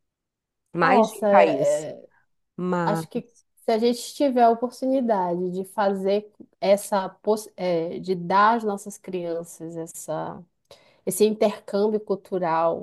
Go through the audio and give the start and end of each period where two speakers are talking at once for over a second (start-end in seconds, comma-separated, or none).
none